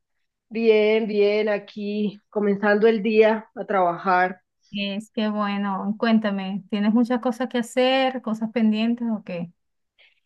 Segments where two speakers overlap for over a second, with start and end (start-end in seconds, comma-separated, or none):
none